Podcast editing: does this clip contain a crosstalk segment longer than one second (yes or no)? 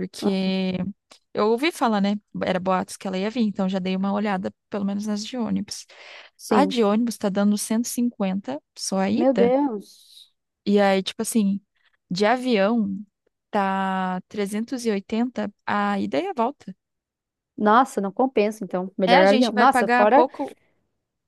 yes